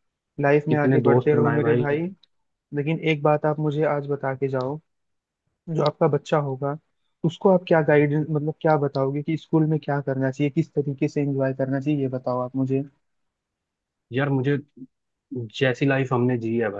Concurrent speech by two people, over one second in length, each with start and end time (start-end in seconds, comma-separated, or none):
0.7-2.0